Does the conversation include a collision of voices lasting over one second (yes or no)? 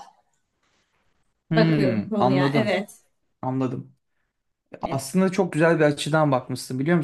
yes